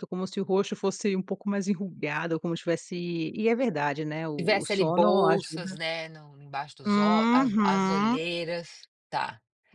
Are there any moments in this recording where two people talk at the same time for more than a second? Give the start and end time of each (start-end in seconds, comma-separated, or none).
4.4-5.8, 6.8-8.2